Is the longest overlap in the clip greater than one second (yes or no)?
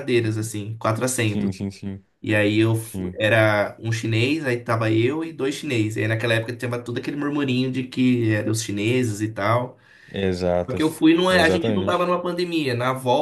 yes